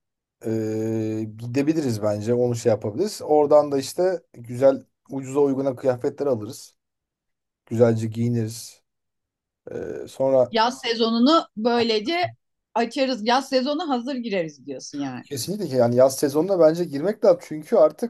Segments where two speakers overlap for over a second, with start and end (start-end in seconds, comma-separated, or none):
none